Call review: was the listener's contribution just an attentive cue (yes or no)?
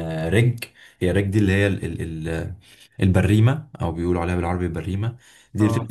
yes